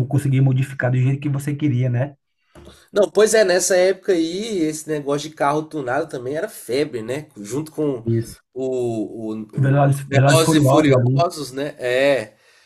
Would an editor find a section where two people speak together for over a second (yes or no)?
yes